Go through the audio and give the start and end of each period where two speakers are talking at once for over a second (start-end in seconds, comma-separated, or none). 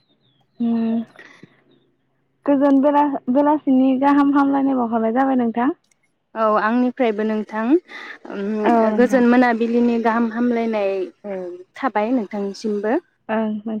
none